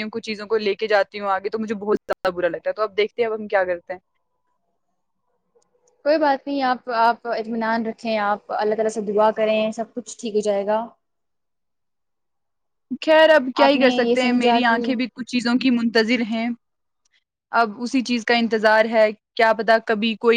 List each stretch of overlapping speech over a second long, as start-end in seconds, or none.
13.7-15.1